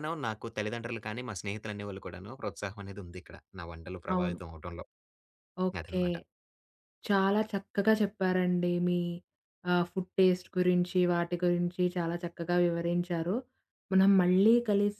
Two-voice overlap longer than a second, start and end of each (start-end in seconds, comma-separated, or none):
none